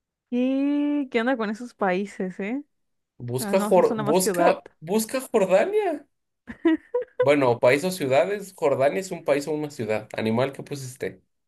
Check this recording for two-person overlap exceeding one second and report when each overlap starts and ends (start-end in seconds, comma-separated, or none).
3.4-4.6